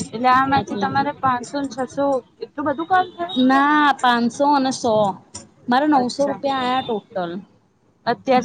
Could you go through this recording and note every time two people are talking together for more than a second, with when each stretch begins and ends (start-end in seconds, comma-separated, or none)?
none